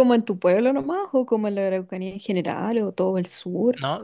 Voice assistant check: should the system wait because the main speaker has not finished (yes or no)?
no